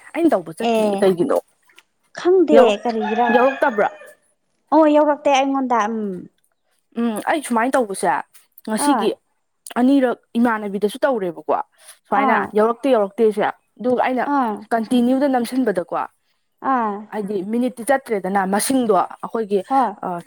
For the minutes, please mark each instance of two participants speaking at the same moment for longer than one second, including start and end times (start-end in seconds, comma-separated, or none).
none